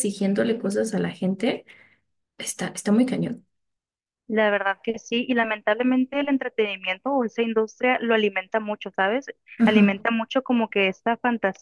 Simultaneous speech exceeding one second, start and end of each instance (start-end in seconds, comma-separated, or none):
none